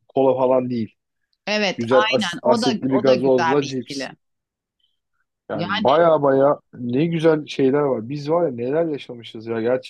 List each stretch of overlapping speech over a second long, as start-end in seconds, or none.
1.8-4.1